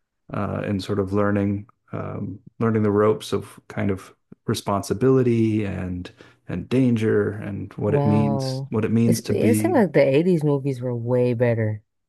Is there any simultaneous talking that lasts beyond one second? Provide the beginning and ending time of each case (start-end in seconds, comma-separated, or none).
7.8-9.8